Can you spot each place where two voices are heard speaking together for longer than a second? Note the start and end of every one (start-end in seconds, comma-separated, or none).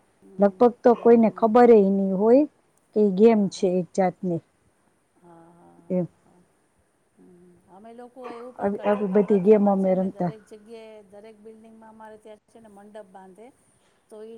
8.6-10.3